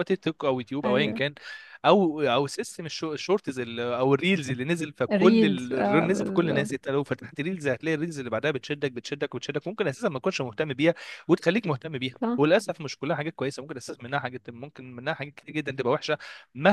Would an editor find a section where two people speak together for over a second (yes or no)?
yes